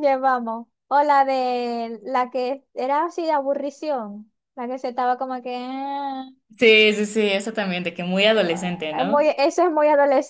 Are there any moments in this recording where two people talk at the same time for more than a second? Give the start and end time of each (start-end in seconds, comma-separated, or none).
none